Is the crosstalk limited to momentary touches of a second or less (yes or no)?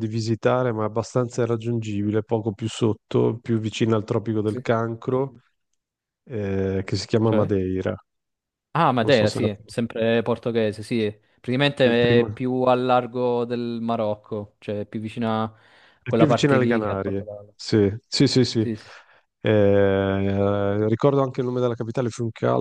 no